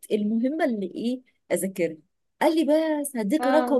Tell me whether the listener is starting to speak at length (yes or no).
no